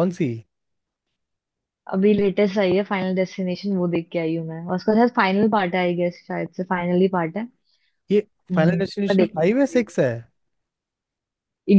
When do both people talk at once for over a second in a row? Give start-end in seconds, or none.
8.5-9.8